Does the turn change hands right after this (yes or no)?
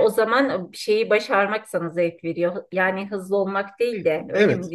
yes